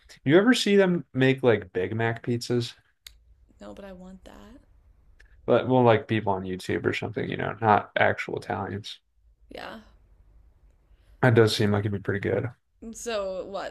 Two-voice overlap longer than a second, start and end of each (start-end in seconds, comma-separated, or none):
none